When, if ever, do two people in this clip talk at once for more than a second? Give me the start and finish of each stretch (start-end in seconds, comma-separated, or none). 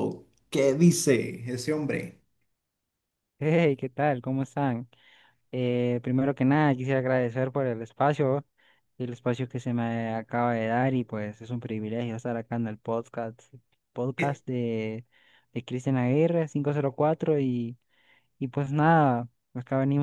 none